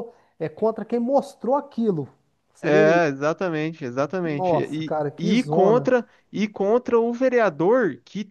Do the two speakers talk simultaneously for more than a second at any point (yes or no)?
yes